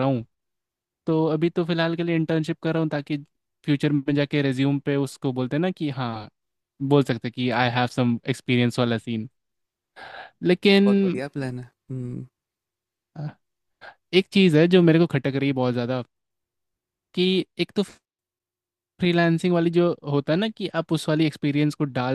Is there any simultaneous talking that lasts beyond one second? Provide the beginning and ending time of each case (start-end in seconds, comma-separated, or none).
none